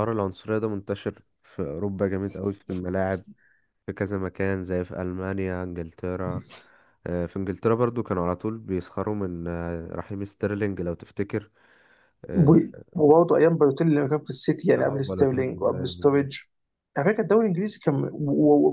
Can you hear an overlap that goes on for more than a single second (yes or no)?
yes